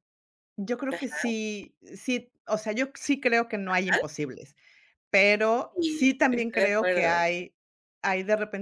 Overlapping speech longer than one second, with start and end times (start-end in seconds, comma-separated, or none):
5.7-7.1